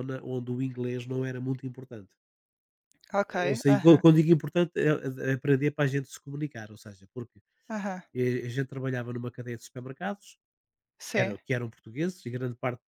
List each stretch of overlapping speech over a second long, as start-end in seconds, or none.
none